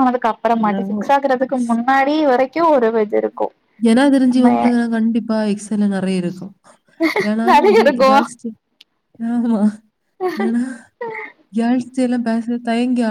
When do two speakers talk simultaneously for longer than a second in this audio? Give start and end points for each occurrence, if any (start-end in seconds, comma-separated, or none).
none